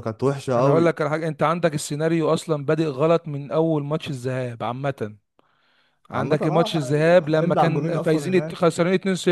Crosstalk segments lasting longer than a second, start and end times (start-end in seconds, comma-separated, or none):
6.1-8.6